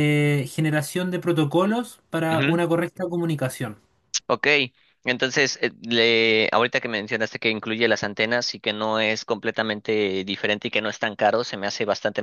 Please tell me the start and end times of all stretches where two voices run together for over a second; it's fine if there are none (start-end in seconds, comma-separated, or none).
none